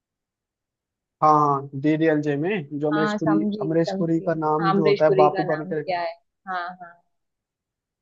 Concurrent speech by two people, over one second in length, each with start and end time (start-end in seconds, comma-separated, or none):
2.9-5.8